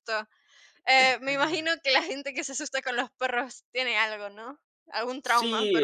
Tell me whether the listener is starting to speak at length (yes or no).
yes